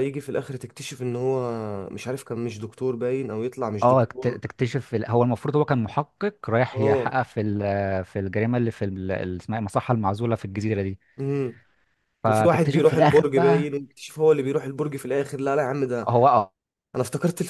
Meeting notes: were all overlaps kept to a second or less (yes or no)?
no